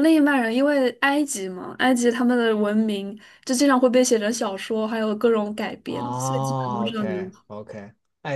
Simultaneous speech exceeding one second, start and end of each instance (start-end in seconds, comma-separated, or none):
5.8-7.2